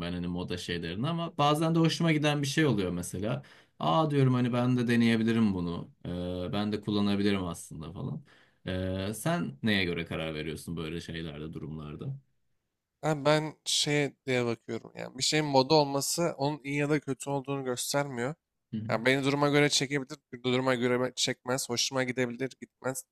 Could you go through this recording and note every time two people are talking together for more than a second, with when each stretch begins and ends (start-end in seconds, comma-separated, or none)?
none